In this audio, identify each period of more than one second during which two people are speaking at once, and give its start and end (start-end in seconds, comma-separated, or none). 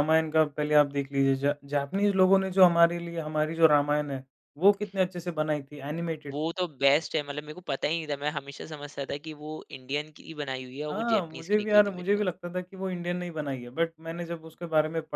10.9-12.2